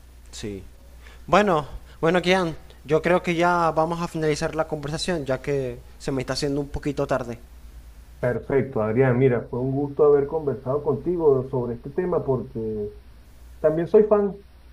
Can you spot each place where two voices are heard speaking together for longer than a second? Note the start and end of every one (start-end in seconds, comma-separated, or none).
none